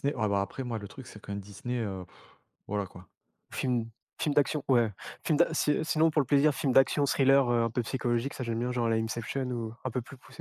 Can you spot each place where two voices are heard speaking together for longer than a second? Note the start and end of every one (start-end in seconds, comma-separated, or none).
none